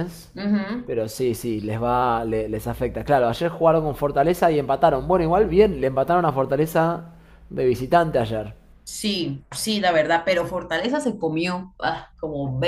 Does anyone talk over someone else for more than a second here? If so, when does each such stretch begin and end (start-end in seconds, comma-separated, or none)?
none